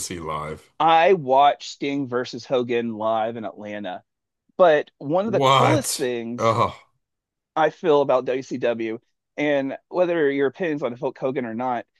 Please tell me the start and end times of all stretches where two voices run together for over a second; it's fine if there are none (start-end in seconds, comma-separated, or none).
5.2-6.6